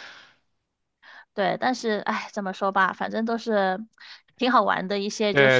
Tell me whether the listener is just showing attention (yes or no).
no